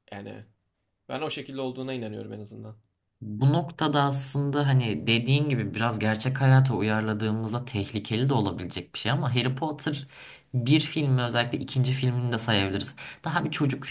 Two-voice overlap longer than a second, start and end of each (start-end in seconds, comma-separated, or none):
none